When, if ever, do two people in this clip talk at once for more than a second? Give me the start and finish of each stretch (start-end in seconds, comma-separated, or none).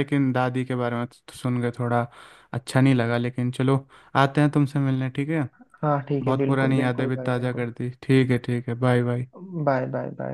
6.2-7.7